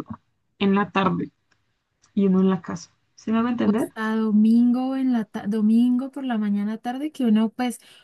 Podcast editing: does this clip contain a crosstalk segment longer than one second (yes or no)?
no